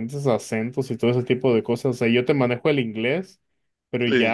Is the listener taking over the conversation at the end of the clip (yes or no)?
no